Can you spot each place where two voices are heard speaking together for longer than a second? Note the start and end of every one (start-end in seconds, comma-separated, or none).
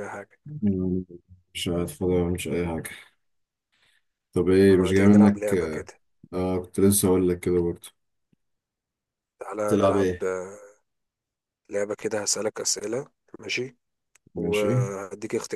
4.6-5.9